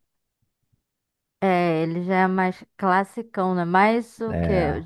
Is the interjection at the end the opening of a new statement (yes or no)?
no